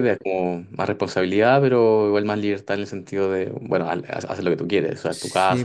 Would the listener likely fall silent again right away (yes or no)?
no